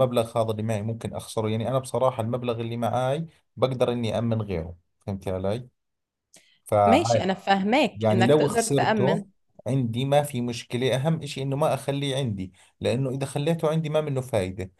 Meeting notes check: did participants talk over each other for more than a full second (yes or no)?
yes